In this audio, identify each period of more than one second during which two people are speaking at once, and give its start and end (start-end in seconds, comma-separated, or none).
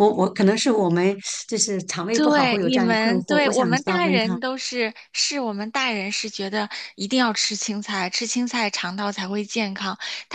2.1-4.4